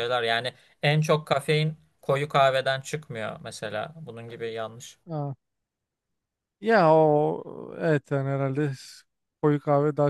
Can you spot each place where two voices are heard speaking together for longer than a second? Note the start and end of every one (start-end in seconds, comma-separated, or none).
none